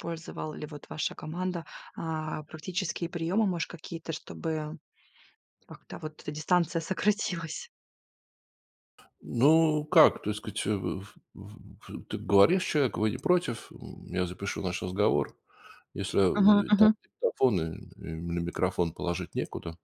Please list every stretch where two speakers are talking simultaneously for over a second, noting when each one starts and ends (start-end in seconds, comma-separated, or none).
none